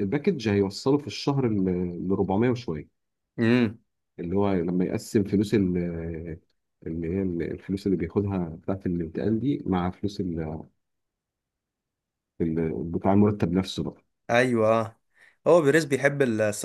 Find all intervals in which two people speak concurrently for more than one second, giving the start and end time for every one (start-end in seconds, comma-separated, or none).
none